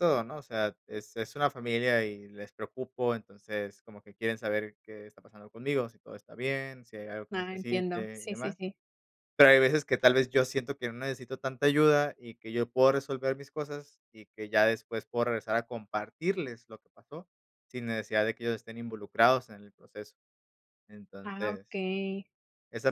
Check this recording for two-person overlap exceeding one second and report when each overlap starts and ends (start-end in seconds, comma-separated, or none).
7.3-8.6